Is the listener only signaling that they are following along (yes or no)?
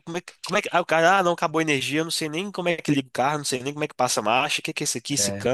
yes